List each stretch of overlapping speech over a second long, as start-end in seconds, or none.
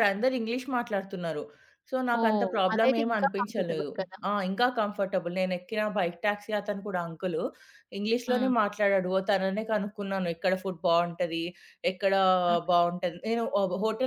2.2-3.9